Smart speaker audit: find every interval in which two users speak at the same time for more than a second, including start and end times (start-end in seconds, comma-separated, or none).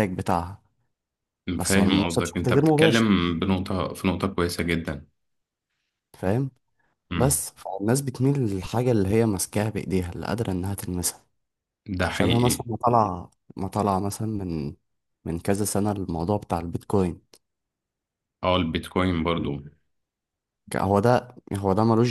1.6-3.1